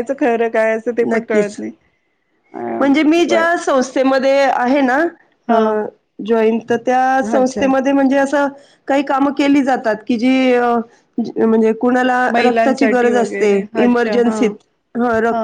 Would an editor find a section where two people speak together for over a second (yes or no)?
yes